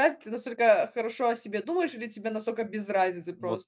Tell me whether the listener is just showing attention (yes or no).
no